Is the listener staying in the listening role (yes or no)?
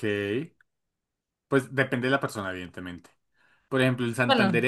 yes